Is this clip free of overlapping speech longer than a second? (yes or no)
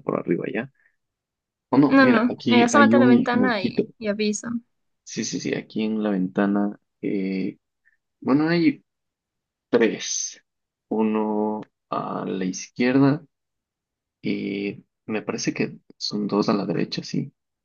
no